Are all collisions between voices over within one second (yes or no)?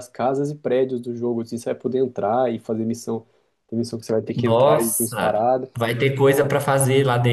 no